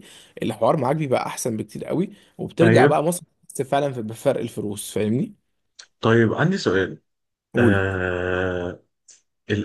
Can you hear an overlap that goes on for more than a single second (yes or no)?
no